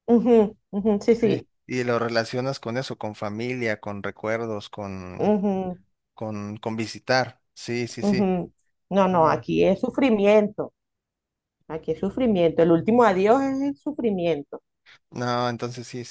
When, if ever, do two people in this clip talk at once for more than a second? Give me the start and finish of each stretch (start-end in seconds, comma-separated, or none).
none